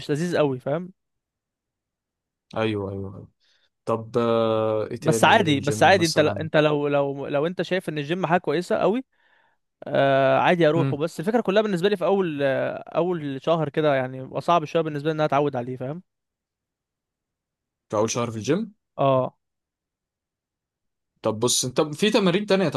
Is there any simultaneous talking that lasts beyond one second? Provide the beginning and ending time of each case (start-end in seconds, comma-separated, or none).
5.0-6.5